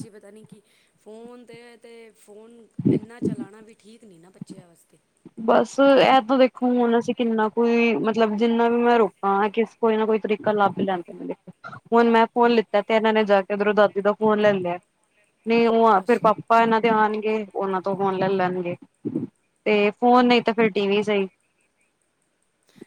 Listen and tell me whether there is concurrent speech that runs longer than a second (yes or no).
no